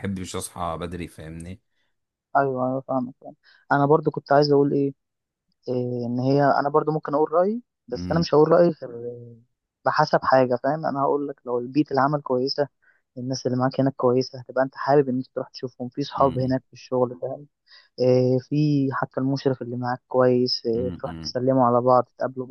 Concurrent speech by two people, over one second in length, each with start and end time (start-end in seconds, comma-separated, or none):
none